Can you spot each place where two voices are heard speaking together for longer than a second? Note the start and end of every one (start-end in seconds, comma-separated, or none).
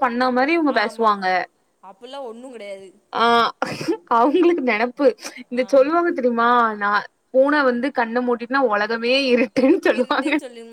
none